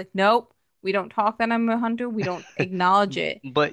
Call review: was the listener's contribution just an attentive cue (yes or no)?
no